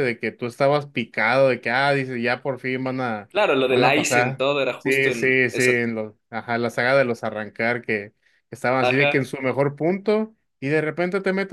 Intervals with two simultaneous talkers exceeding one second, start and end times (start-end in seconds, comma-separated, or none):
3.7-5.7